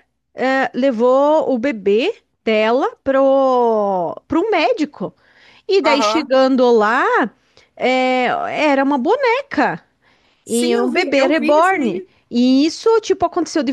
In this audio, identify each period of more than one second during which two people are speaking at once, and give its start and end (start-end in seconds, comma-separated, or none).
10.5-12.1